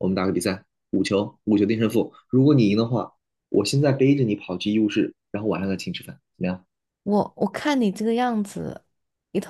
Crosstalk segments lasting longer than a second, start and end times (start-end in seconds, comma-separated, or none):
none